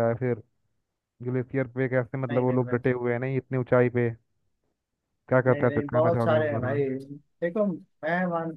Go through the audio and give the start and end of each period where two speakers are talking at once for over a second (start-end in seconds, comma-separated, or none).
5.5-6.8